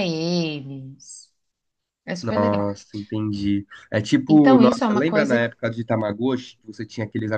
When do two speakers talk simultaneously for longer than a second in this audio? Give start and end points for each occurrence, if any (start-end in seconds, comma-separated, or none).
4.3-5.5